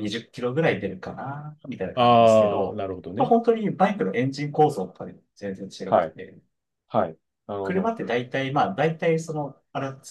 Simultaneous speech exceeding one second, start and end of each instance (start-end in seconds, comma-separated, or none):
1.9-3.3